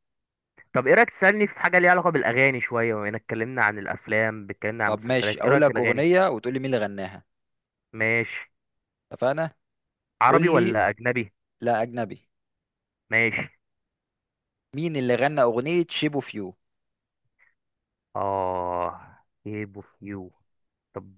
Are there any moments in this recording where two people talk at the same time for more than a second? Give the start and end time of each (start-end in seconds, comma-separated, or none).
4.9-6.1